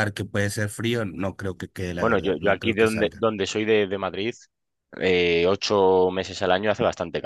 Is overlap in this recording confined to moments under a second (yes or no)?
no